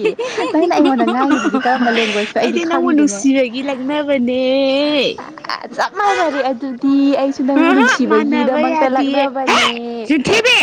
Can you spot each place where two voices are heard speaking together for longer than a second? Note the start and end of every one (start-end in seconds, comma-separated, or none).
7.7-9.6